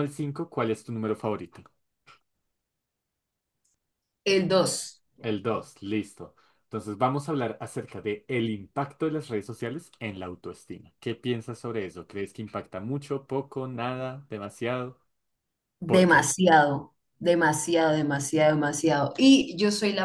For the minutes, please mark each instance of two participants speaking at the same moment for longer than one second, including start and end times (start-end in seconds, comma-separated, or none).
none